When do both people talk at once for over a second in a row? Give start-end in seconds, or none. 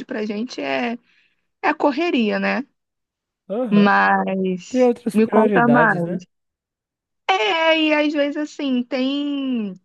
4.7-6.2